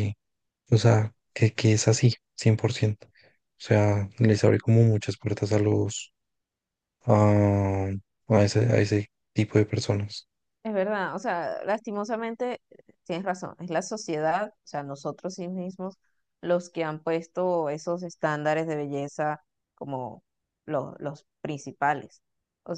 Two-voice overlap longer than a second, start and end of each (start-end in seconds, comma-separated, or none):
none